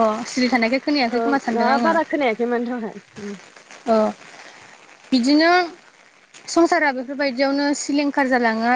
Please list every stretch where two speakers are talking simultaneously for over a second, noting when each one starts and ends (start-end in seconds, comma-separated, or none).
none